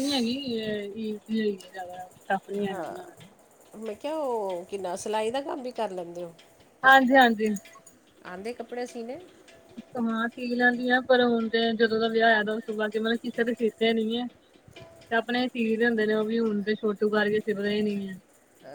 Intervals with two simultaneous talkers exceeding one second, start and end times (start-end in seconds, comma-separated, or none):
none